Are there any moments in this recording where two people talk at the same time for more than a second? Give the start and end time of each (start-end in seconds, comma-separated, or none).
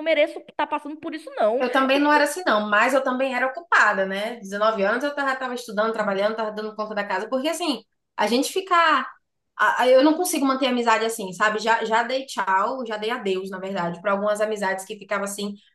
none